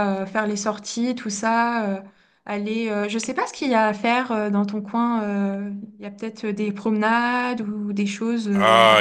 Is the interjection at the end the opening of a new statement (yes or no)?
yes